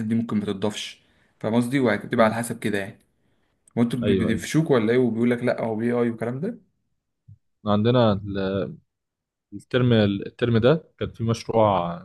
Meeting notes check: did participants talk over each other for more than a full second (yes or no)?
no